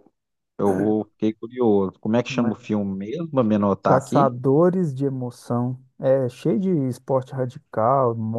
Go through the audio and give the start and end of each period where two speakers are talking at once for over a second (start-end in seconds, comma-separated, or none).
none